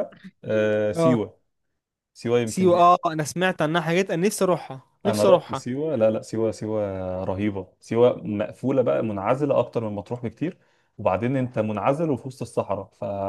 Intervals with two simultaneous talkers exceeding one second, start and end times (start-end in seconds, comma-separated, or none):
none